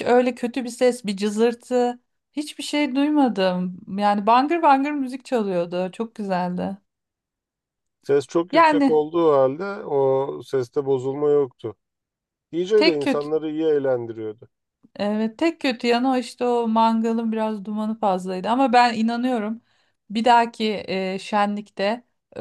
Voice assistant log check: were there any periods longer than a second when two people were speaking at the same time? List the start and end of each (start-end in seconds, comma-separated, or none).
none